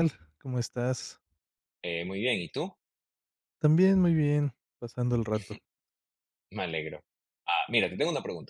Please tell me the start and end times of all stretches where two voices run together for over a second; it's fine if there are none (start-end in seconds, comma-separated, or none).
none